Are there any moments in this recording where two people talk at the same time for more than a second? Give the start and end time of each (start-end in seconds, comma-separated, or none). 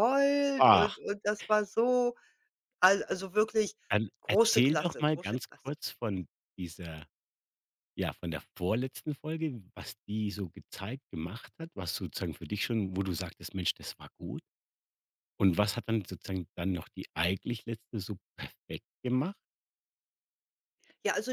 4.2-5.7